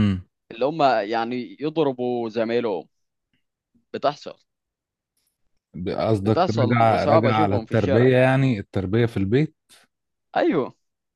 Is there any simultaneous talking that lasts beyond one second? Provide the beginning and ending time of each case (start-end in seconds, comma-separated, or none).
6.2-8.1